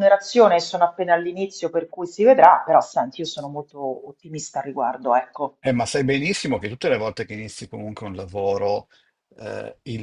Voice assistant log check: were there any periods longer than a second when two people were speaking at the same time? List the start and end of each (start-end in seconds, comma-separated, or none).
none